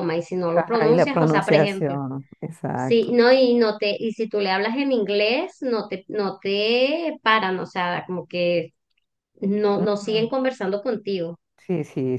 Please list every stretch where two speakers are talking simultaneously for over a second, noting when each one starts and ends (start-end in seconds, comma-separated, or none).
0.6-1.9